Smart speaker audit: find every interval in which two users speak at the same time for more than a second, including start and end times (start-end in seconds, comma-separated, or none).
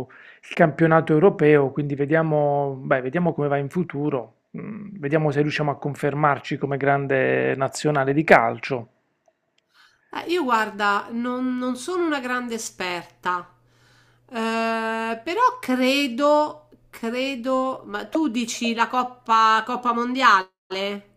none